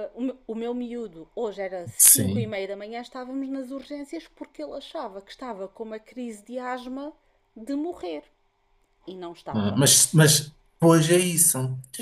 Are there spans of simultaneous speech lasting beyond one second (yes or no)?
no